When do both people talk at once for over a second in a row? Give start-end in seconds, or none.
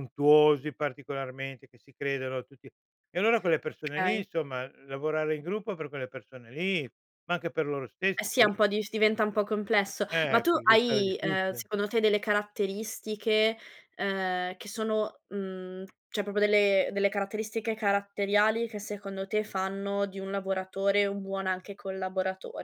10.1-11.7